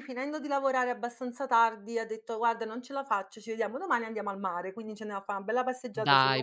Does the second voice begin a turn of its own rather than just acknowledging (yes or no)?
yes